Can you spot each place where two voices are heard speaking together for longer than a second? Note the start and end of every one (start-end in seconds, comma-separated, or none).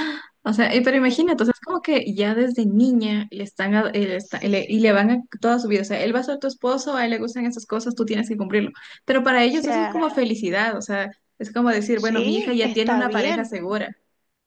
11.9-13.6